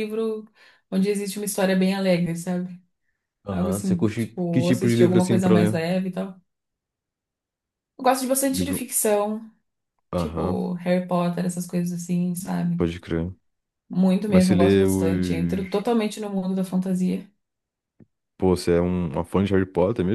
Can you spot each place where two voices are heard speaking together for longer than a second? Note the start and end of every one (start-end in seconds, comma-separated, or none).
3.5-5.8, 14.3-15.7